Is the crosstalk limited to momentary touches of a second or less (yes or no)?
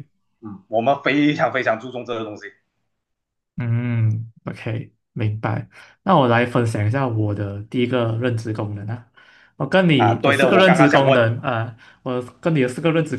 no